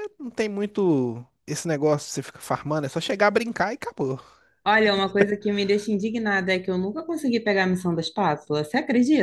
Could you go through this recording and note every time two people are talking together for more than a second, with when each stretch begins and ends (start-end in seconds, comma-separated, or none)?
none